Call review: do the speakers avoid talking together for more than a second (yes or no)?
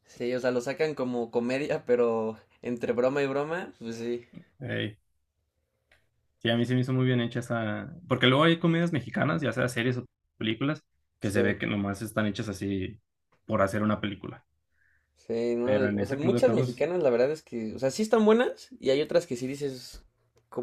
no